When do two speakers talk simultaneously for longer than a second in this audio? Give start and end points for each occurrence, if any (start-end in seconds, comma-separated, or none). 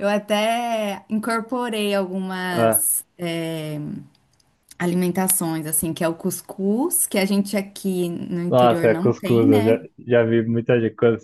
8.5-9.8